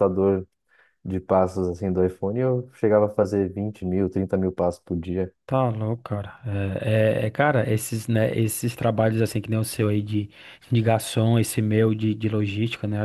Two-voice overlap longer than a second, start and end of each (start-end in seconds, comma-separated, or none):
none